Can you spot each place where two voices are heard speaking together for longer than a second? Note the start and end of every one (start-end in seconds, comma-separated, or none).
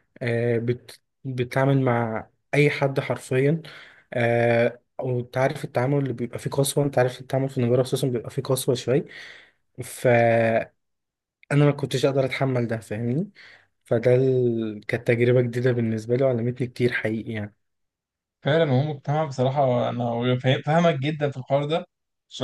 none